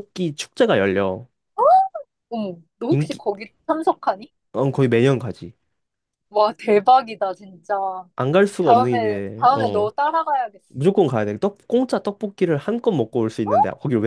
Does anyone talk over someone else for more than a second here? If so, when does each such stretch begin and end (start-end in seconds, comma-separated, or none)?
8.6-9.9